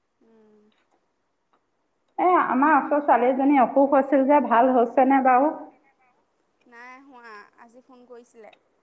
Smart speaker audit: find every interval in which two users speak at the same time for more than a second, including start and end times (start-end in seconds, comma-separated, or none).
none